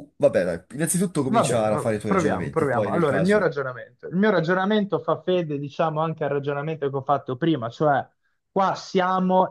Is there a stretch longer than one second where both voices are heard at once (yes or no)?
yes